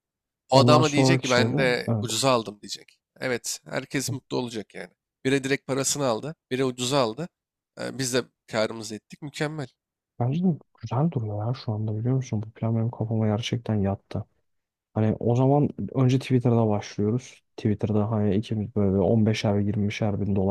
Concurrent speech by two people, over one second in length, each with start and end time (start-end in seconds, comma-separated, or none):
0.5-2.2